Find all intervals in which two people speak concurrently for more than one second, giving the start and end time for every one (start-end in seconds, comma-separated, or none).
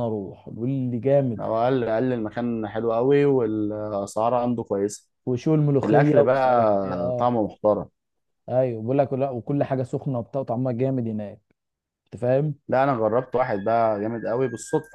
5.8-7.3